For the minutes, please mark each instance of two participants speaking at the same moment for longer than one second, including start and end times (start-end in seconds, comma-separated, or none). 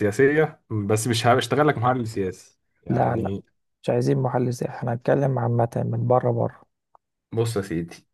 none